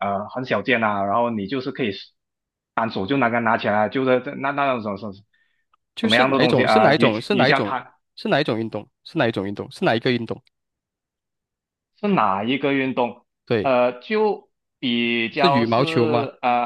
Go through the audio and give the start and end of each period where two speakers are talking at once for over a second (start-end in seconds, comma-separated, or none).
5.9-7.9